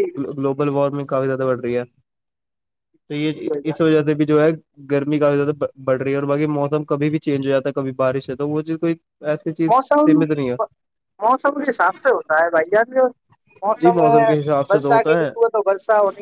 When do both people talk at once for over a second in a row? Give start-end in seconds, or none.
none